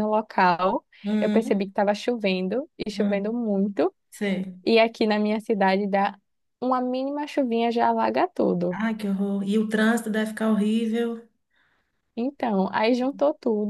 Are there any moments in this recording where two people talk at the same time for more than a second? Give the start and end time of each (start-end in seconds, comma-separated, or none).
none